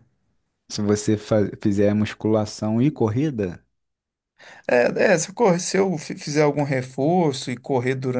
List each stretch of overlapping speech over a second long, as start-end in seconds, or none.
none